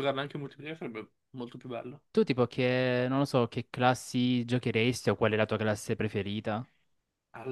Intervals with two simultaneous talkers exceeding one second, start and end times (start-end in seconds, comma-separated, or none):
none